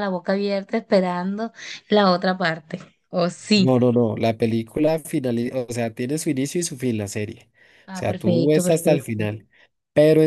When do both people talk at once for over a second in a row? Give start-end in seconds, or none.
7.9-9.2